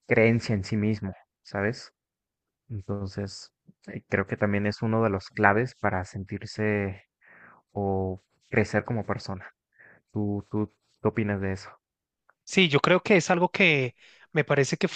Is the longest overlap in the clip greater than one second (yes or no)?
no